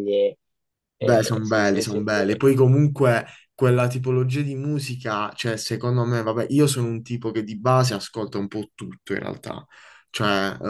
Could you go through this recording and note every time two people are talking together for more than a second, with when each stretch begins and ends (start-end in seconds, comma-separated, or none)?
1.0-2.2